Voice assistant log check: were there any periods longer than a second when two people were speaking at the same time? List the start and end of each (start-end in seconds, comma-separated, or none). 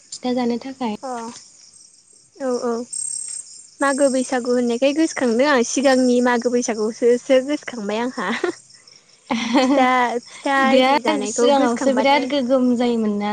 10.7-12.2